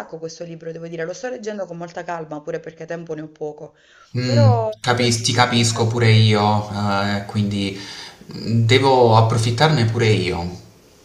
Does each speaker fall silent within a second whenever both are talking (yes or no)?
no